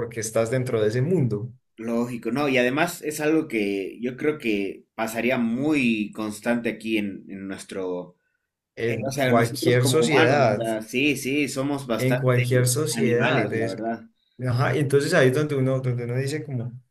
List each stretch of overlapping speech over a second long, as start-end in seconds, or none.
8.8-10.6, 12.0-13.8